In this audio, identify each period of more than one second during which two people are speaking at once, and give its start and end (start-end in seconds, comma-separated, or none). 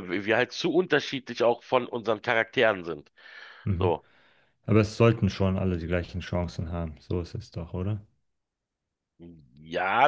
none